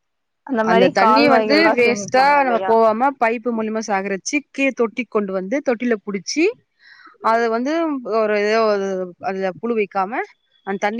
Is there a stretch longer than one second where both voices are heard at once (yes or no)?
yes